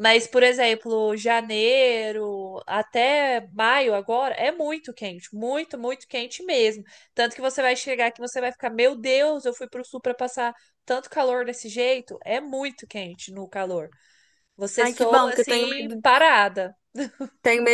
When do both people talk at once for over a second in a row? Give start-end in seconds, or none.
14.8-16.0